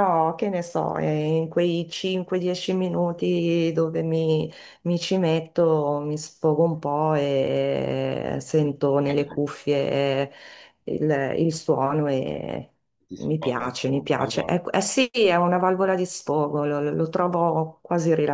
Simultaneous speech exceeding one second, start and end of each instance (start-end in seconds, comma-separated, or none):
13.1-14.6